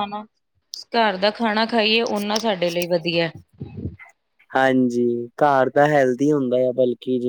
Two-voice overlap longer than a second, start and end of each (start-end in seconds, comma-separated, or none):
none